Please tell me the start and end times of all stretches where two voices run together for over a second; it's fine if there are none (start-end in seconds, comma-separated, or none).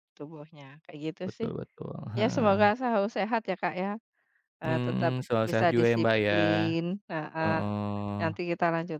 4.6-6.4